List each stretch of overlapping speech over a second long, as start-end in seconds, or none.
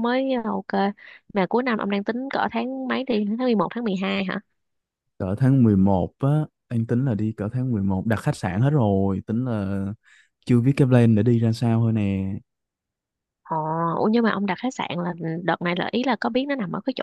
none